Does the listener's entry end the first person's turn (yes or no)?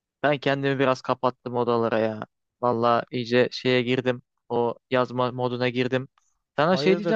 no